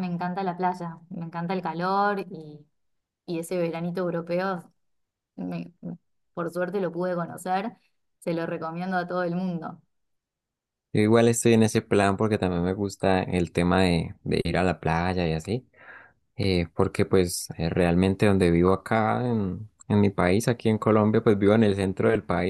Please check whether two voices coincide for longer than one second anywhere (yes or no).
no